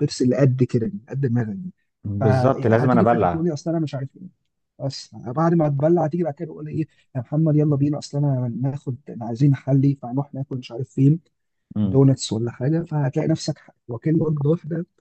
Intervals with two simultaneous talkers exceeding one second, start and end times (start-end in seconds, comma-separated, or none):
2.2-3.5